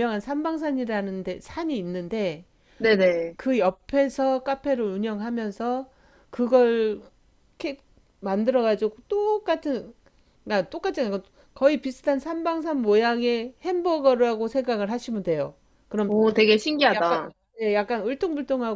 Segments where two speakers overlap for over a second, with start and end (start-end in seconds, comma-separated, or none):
none